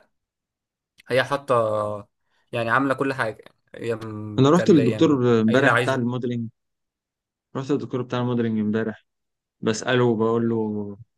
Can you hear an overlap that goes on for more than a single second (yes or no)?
yes